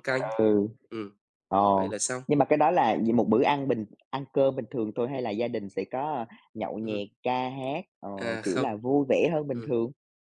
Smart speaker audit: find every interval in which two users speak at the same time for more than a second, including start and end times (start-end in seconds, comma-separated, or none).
none